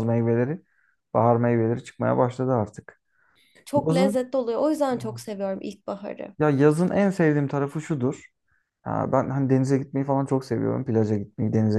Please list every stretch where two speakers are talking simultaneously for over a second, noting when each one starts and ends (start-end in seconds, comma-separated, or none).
none